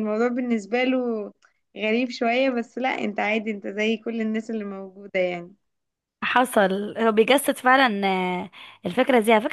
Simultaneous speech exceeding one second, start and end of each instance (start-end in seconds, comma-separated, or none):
none